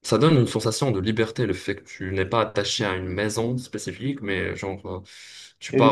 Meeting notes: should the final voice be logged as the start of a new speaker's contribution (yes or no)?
yes